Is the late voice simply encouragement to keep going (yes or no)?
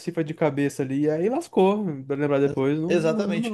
no